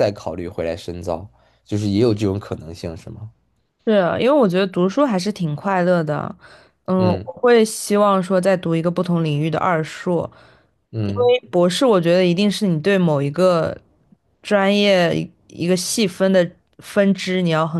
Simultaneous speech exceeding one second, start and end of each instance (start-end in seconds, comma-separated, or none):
none